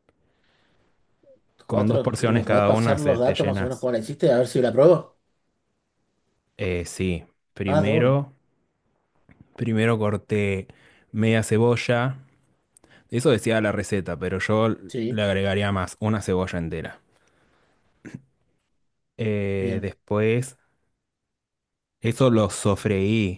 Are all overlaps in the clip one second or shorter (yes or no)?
no